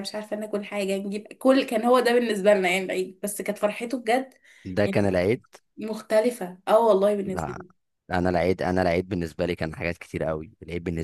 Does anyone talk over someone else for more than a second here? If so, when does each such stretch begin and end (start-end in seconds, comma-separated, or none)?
none